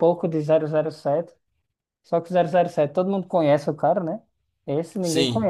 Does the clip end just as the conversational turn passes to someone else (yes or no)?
no